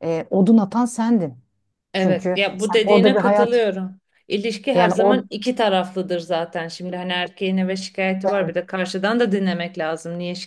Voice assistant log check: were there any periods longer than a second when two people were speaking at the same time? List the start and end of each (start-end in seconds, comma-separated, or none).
2.0-3.5